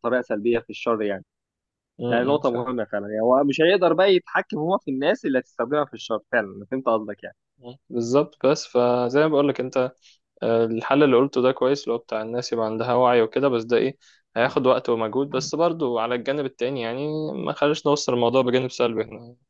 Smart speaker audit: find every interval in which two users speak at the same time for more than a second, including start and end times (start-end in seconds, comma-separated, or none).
none